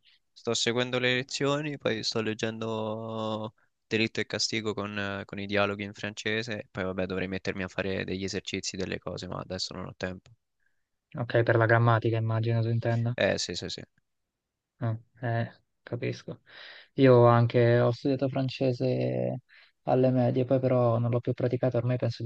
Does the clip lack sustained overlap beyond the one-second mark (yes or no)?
yes